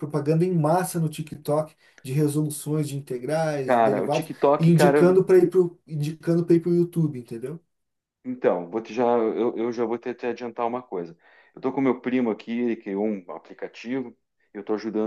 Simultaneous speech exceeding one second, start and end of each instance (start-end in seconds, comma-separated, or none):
3.6-5.1